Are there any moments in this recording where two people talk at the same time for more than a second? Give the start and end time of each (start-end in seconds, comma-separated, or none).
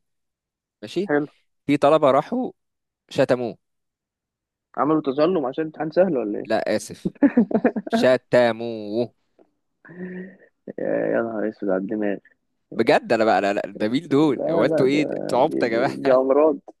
14.1-16.2